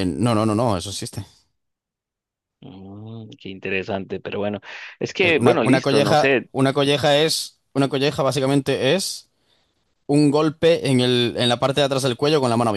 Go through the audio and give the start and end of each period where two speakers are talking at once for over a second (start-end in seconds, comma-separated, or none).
5.2-6.5